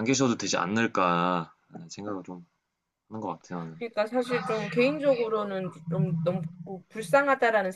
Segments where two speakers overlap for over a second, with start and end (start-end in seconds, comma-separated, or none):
none